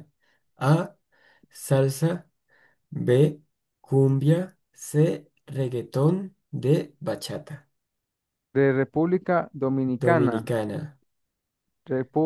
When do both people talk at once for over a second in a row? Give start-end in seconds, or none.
none